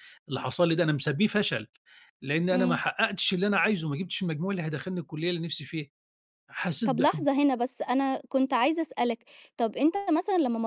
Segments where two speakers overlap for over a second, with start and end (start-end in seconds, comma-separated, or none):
none